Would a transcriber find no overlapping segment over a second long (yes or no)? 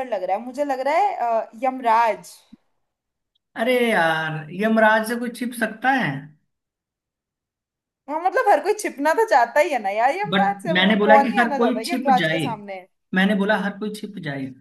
no